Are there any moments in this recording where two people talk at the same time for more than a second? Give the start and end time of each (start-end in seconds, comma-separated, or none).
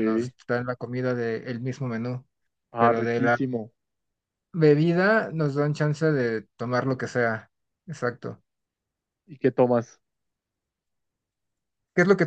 none